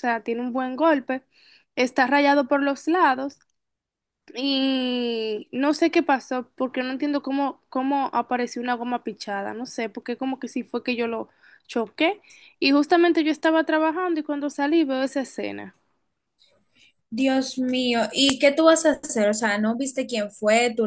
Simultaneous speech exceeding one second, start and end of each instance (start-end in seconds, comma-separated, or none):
none